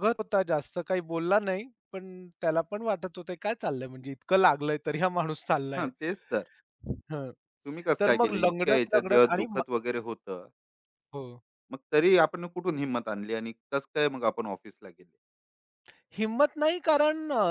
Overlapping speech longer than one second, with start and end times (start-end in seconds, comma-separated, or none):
8.0-9.6